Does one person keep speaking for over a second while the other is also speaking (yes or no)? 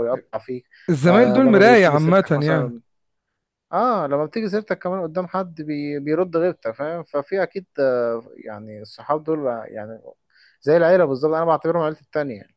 yes